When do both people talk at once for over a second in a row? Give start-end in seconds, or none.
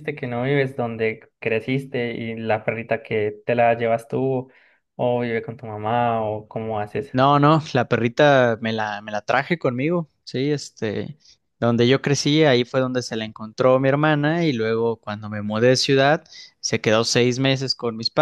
none